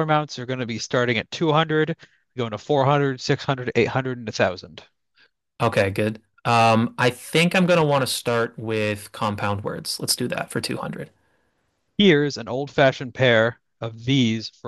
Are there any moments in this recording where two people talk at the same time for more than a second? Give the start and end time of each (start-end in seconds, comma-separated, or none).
none